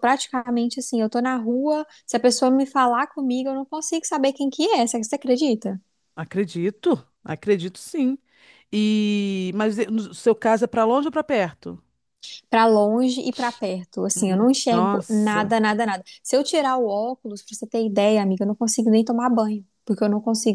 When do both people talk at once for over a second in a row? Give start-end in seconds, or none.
14.1-15.6